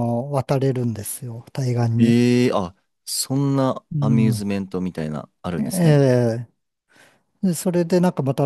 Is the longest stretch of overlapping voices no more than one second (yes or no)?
yes